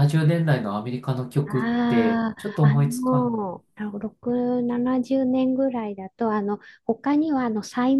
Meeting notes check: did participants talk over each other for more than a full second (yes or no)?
yes